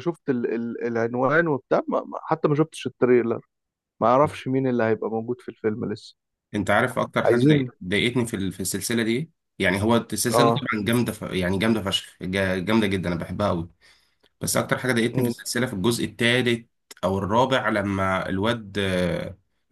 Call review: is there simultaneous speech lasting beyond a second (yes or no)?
no